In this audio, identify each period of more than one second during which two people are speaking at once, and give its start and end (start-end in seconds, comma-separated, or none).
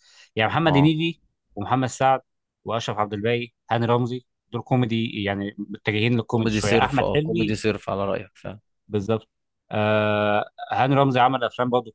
6.3-7.6